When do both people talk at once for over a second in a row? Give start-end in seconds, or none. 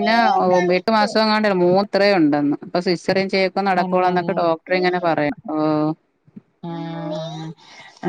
none